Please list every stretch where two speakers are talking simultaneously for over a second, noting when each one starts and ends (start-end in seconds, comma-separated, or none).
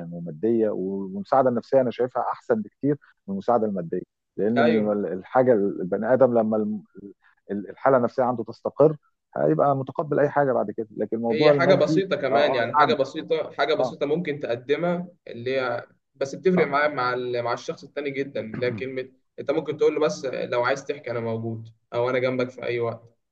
11.3-12.9